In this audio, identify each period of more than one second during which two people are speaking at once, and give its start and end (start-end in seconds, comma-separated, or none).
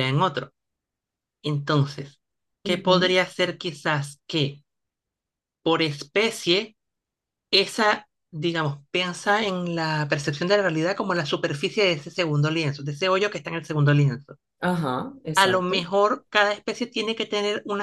none